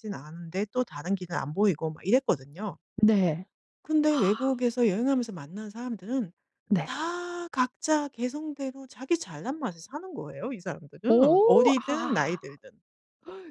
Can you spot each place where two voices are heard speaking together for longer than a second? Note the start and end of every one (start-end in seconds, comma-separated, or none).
11.1-12.4